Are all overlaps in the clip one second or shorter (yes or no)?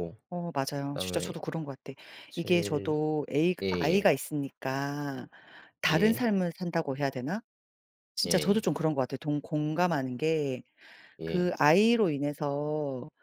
yes